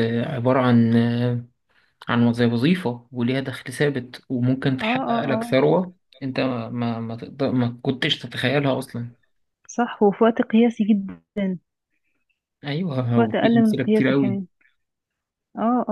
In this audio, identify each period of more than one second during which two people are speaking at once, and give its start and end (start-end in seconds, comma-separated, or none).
13.1-14.4